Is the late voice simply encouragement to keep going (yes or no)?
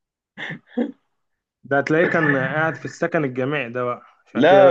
no